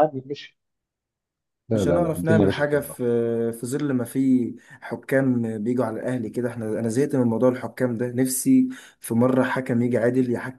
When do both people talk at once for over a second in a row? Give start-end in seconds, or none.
1.7-2.9